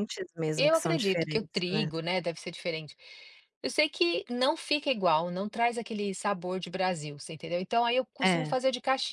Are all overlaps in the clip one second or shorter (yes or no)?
no